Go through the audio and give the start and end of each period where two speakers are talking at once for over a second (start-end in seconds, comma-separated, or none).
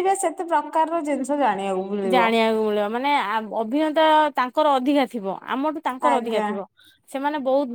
none